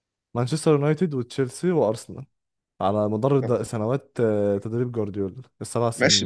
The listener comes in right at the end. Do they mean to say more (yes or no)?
yes